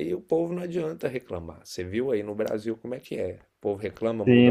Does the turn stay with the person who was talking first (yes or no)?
no